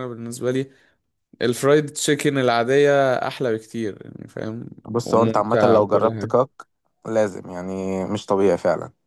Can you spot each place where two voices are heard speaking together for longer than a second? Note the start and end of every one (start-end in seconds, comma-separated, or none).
5.0-6.3